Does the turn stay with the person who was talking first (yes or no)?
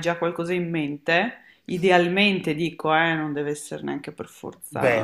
no